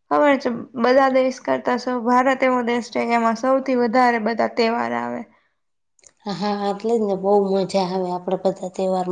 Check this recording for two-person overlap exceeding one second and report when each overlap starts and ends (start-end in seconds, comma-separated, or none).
none